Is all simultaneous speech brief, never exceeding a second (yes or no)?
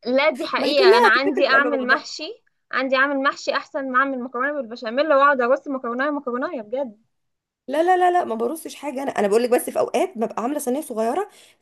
no